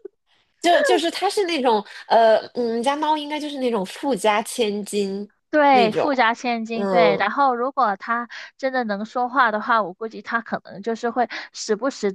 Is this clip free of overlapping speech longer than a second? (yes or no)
yes